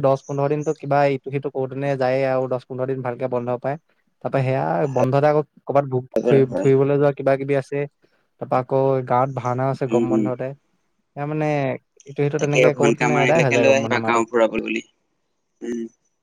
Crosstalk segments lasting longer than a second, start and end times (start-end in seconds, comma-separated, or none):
12.4-14.2